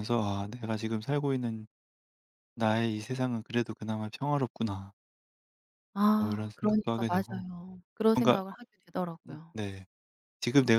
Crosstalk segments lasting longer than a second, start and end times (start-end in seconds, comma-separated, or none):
6.2-7.5